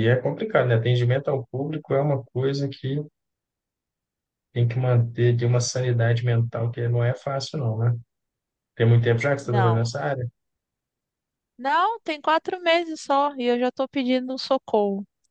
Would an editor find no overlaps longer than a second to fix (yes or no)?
yes